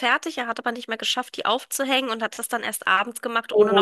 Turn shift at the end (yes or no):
yes